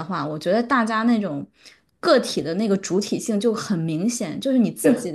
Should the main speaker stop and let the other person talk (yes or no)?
no